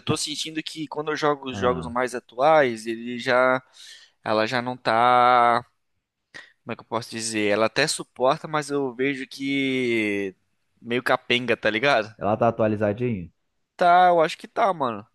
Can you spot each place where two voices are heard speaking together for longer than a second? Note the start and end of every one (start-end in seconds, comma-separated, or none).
none